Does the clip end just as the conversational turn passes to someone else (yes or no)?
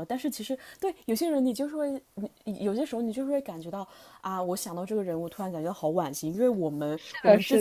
no